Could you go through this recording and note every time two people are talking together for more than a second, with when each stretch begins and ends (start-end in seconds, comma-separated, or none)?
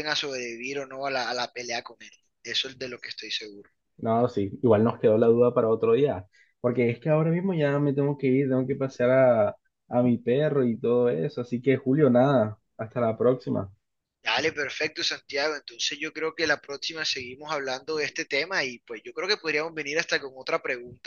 none